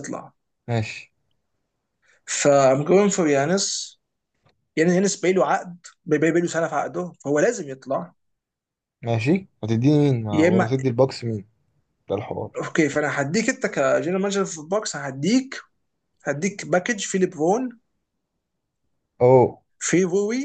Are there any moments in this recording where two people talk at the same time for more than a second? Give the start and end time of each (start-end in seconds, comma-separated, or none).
none